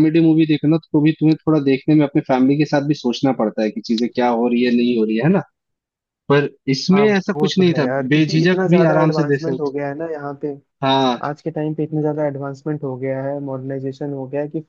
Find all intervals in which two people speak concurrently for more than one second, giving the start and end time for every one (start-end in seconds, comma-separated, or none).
6.9-9.7